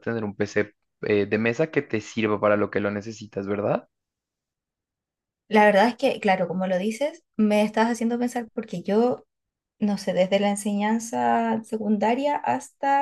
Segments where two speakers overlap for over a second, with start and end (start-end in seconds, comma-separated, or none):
none